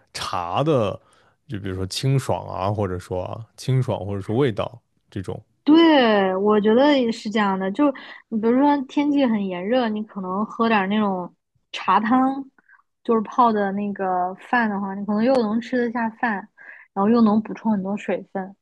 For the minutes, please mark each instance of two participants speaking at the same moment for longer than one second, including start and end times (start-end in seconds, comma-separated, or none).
none